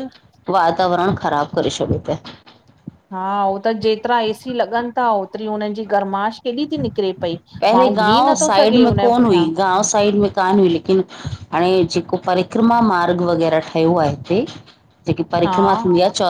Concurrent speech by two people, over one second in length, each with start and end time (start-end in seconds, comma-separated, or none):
7.7-9.4